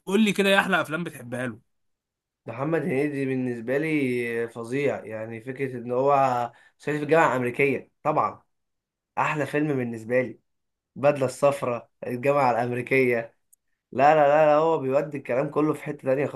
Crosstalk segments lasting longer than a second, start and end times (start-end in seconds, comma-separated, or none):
none